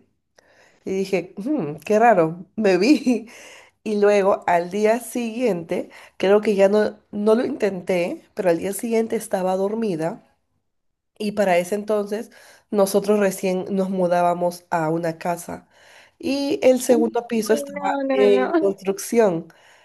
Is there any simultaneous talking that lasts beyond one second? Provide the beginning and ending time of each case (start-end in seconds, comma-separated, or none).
16.9-18.7